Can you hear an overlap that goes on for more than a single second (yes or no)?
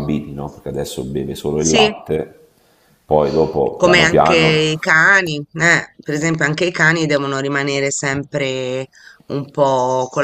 no